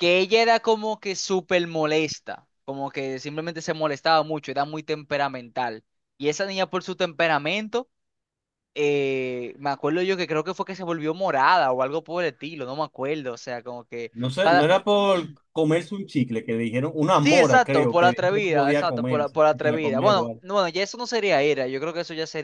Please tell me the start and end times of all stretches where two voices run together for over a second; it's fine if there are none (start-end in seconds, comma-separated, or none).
17.2-20.4